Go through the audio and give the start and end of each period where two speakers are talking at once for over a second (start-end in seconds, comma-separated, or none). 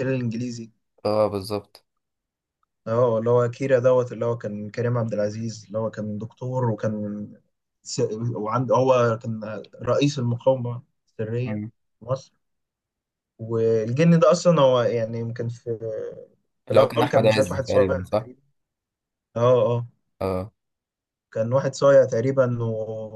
16.7-18.3